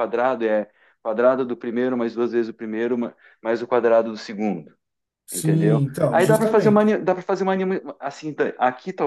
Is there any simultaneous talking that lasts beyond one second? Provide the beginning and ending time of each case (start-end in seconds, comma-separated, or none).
5.3-7.0